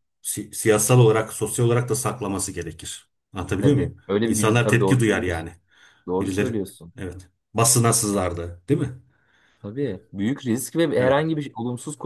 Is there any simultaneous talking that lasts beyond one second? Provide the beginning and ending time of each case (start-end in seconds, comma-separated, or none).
3.6-5.5